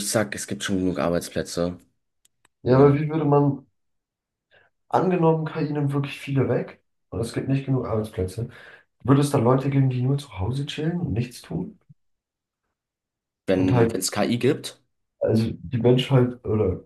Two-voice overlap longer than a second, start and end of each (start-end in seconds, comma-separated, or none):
none